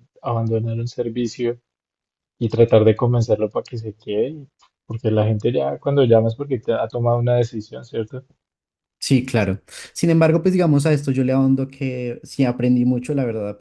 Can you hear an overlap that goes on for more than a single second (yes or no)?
no